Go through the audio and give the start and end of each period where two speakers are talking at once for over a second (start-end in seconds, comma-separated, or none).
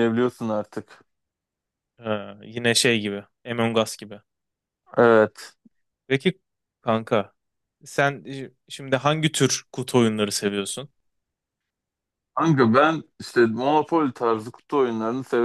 none